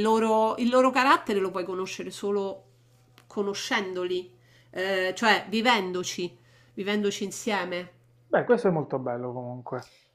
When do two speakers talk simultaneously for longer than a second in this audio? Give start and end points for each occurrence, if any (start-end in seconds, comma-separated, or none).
none